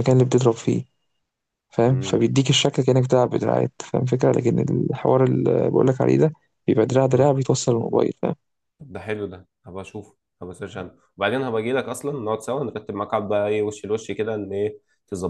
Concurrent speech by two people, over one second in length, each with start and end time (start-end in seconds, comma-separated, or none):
none